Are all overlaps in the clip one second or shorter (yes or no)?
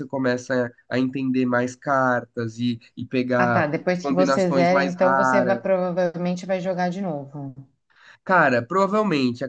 no